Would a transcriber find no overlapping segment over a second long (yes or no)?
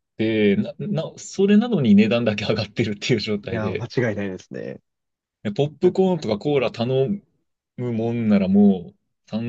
yes